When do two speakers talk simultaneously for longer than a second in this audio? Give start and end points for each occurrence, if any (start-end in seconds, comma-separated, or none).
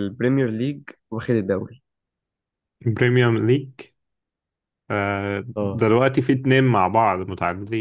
none